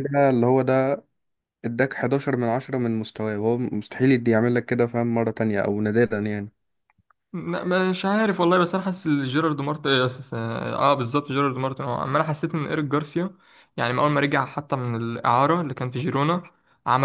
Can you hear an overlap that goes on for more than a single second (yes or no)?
no